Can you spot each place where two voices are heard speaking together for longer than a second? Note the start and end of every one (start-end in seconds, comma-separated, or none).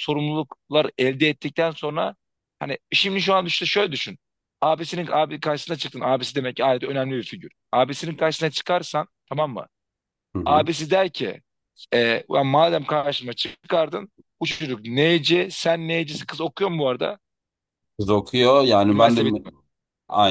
none